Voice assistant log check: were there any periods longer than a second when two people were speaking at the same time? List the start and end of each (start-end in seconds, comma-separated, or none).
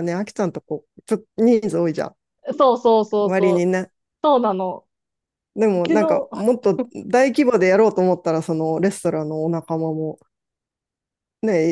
none